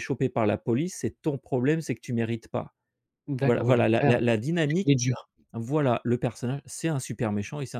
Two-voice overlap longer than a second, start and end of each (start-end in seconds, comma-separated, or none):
3.4-4.9